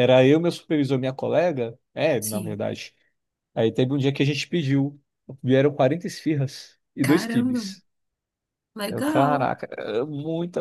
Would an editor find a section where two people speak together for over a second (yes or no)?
no